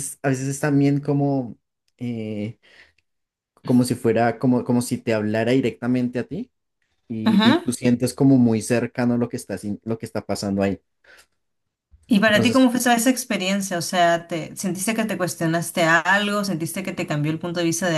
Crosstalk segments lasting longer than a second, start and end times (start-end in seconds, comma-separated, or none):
none